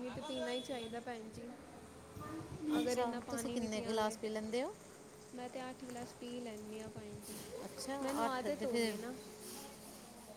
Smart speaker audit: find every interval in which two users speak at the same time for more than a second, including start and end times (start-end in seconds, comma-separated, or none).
2.9-4.1